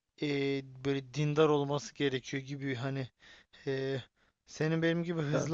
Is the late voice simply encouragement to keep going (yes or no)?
yes